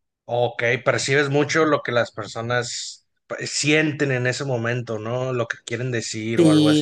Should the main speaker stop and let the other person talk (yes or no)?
yes